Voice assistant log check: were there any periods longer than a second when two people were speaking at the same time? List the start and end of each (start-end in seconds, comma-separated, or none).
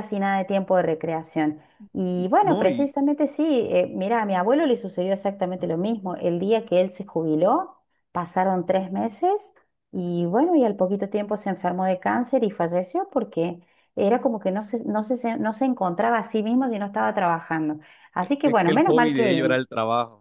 18.2-19.6